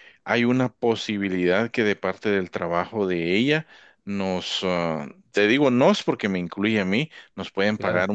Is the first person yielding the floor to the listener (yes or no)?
no